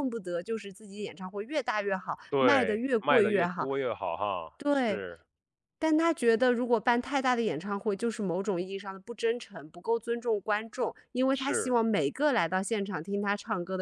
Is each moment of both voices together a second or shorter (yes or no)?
no